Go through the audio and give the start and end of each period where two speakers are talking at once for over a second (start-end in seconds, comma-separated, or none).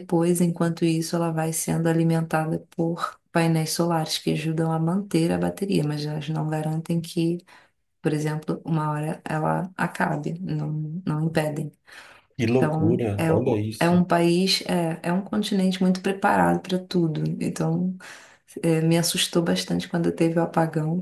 12.6-14.0